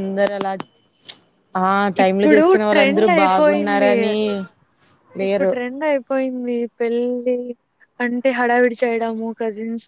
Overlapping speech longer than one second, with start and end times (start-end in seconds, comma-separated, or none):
2.0-3.9